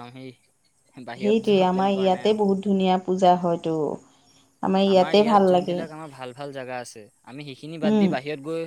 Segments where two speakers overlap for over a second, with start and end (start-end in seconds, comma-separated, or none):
none